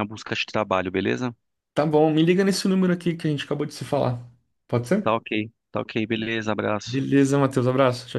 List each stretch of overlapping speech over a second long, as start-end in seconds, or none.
none